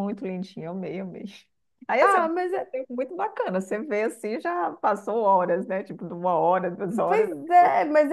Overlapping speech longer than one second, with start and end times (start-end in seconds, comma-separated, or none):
none